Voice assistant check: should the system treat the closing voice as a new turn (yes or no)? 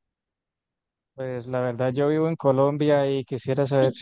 no